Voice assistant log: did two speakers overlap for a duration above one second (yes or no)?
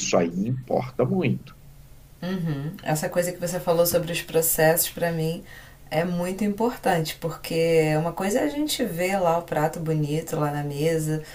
no